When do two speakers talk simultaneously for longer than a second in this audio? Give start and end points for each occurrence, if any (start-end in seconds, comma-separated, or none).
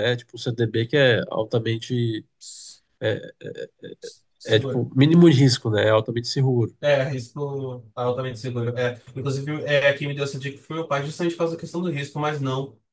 none